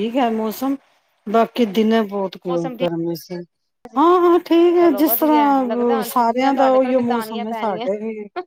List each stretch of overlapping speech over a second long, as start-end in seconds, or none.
4.8-7.9